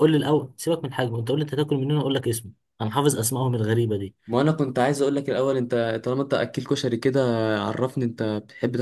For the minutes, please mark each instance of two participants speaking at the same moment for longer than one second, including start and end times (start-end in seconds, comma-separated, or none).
none